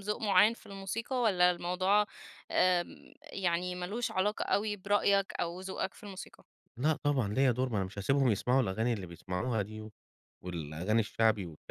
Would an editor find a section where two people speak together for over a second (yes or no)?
no